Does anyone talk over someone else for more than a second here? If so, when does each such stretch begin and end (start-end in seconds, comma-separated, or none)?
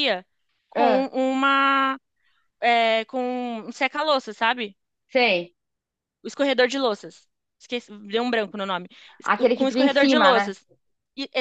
9.2-10.5